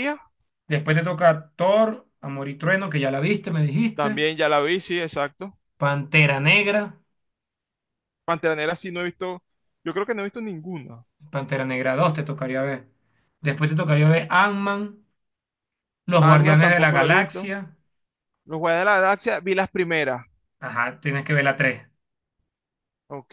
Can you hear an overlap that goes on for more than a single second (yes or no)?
yes